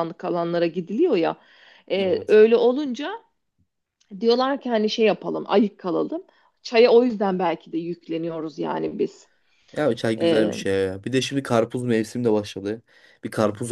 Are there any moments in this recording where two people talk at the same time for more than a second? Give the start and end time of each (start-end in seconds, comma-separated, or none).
none